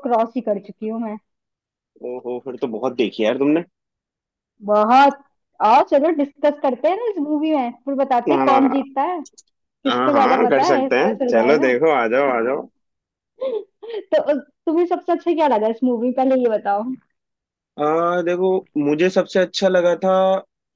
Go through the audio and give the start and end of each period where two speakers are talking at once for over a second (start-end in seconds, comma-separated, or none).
9.9-11.7